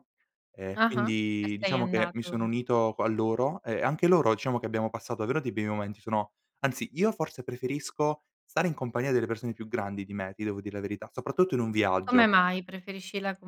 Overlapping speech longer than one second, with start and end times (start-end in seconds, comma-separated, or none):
0.7-2.5